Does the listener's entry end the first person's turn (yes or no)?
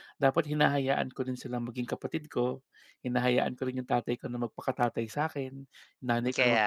no